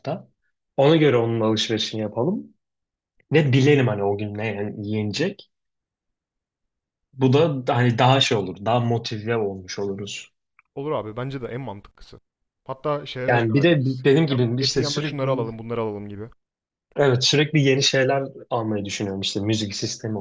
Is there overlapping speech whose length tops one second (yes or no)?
yes